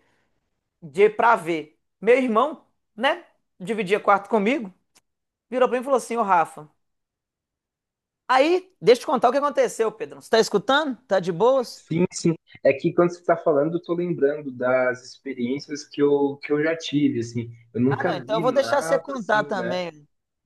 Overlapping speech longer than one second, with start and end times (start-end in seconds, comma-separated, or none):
17.9-19.8